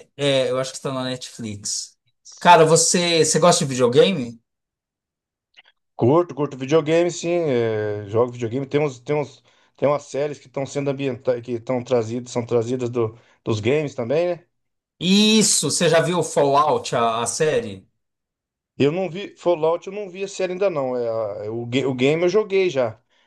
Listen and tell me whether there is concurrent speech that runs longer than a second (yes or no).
no